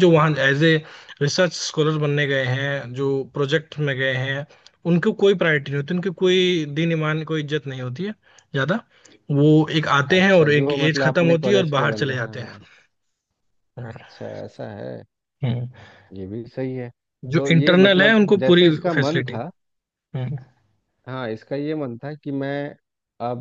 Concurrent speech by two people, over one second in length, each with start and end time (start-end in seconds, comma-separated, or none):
10.1-12.6, 17.4-19.3